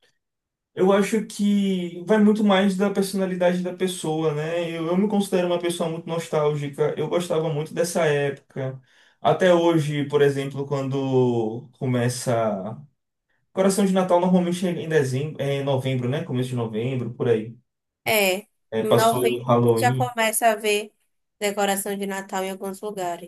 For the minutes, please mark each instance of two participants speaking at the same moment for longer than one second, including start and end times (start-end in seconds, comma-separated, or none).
18.8-20.1